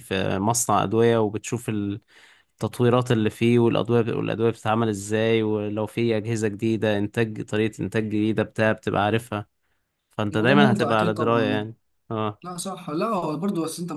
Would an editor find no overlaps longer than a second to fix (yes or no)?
no